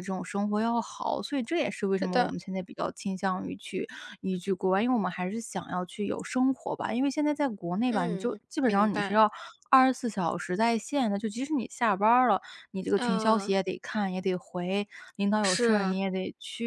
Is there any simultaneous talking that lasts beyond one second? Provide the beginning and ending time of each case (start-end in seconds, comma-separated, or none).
7.8-9.3